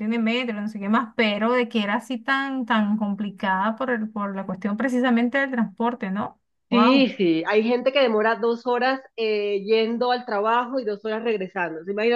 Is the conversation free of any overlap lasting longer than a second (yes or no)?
yes